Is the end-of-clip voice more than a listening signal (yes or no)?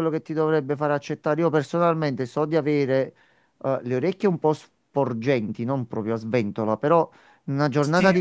no